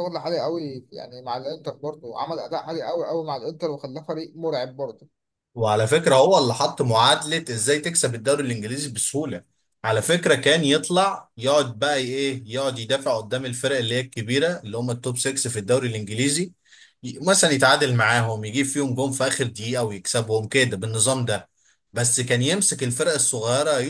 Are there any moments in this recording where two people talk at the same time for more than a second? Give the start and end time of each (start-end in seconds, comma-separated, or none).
none